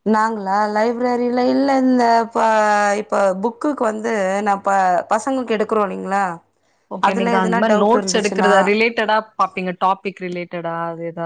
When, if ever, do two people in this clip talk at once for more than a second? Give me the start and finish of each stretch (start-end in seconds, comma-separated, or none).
7.1-8.5